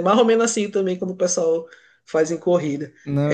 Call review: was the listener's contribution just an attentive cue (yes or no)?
yes